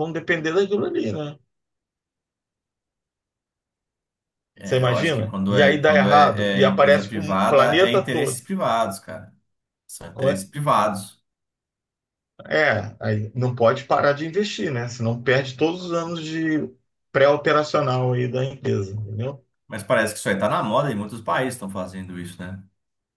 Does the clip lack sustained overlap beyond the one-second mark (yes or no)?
no